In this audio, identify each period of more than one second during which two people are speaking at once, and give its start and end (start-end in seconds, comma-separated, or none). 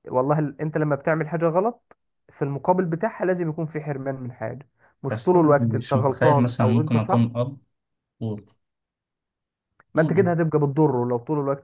5.1-7.3